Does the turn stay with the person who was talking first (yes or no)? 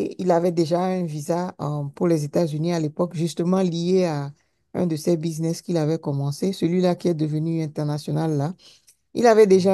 yes